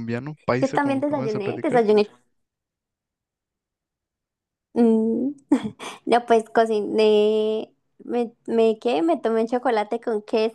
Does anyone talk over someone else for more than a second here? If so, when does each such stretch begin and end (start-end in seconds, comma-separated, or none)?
0.6-1.9